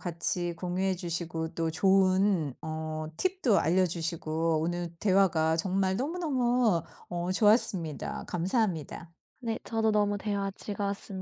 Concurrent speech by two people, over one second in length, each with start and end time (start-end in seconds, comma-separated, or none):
none